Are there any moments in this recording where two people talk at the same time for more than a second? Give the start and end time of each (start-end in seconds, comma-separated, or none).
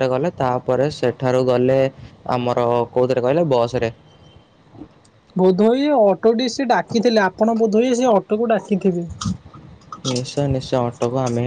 none